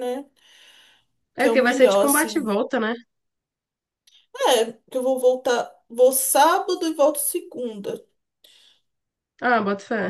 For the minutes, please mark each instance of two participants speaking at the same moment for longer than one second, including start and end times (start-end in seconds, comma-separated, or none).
1.4-2.6